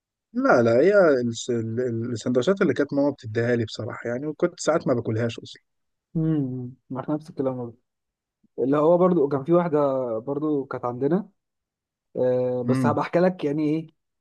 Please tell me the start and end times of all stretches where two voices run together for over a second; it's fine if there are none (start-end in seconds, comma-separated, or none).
none